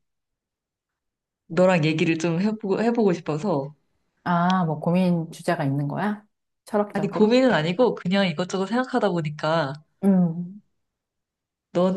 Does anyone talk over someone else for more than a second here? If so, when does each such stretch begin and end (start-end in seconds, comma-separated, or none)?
none